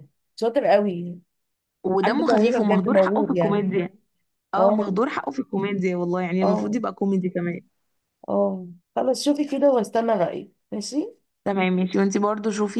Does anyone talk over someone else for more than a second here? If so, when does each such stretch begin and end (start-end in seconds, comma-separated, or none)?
2.0-3.6